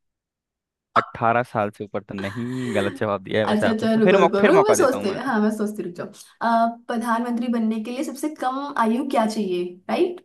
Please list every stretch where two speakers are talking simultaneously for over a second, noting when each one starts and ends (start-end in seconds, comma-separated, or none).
3.5-5.2